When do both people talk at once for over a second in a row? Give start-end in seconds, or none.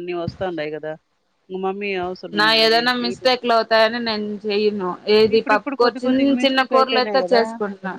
5.3-7.4